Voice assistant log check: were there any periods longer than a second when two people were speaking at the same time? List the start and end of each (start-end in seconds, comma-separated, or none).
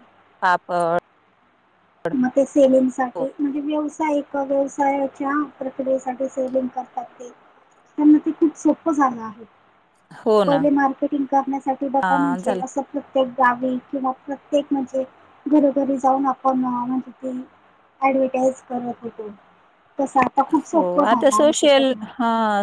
none